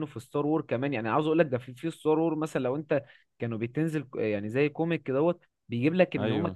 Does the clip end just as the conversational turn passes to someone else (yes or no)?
no